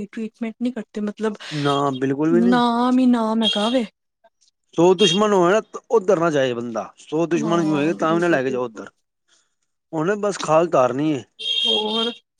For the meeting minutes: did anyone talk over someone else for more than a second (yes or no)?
yes